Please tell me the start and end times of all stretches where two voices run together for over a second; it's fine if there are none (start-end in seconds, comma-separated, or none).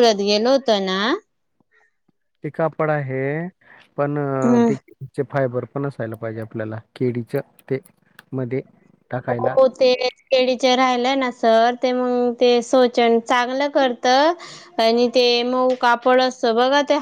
none